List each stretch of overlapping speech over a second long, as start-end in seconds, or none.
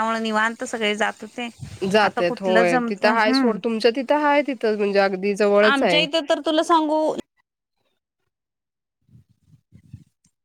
2.0-3.6